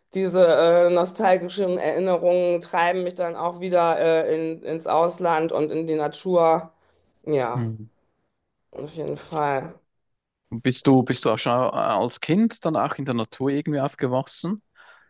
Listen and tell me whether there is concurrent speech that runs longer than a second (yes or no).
no